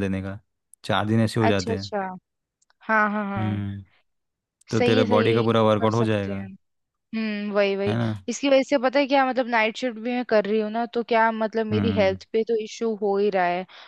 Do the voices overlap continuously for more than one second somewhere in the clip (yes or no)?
yes